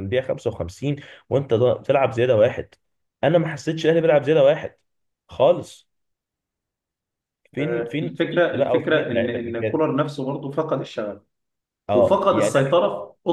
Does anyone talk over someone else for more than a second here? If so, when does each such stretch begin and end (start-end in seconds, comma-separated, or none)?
7.6-9.9